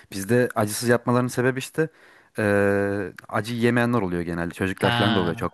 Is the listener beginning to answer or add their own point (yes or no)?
no